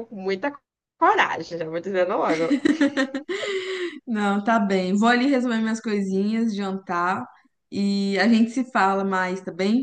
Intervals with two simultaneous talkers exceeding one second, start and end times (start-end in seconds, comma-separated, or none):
none